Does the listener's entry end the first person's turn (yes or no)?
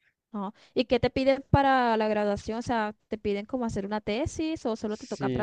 yes